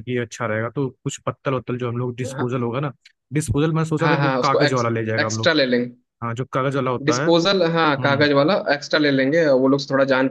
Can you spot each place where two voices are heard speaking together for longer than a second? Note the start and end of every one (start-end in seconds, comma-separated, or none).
4.0-5.5